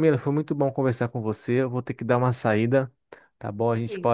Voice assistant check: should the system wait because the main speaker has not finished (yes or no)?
yes